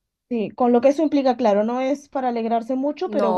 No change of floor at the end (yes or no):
yes